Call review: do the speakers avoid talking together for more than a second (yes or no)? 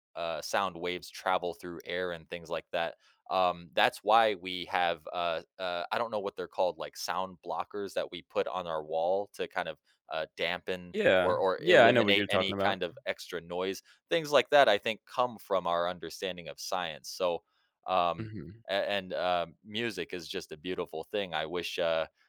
no